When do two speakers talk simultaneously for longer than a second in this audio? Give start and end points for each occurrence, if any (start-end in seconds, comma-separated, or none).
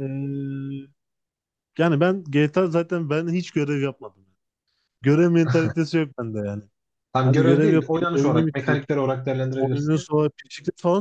7.2-8.8